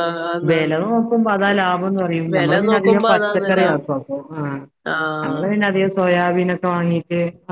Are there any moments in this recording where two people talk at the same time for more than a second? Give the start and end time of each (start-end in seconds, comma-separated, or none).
2.3-3.8